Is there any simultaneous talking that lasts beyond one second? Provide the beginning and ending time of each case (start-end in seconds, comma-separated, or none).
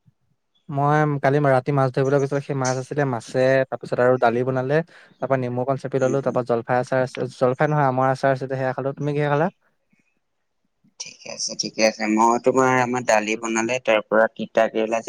none